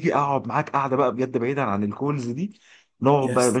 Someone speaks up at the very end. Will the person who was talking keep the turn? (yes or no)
yes